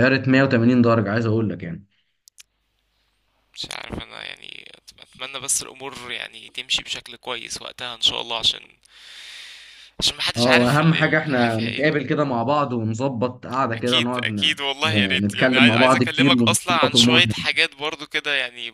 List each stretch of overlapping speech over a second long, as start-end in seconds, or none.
10.4-11.9, 13.7-17.3